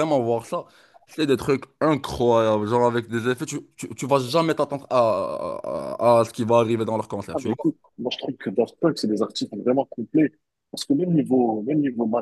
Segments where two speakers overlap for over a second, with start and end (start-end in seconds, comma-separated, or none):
none